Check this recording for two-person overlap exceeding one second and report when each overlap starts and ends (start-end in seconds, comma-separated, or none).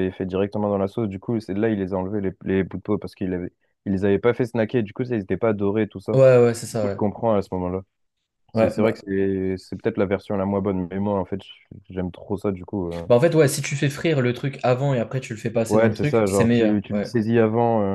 15.7-17.1